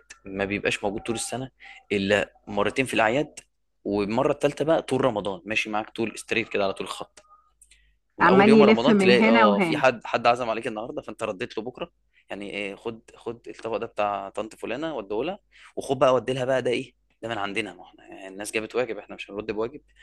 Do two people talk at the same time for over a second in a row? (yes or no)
yes